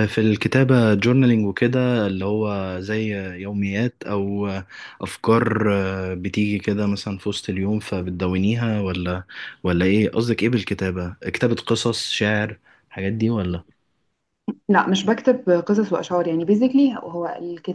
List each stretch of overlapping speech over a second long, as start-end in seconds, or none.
none